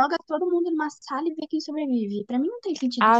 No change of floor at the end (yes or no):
no